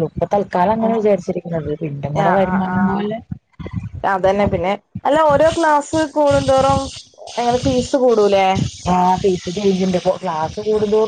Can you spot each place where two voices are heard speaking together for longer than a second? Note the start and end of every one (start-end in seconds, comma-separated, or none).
0.8-3.0